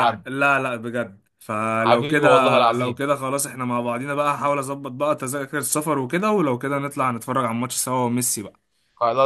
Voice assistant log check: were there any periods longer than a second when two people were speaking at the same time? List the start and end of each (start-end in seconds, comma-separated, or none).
1.8-3.0